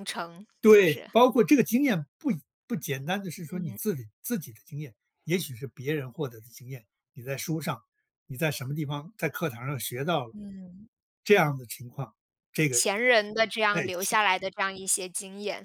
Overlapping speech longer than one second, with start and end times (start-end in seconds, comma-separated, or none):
none